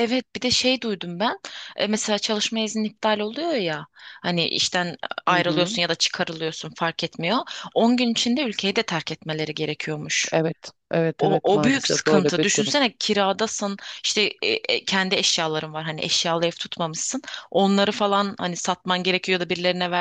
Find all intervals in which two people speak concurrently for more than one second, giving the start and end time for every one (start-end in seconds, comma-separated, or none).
11.2-12.7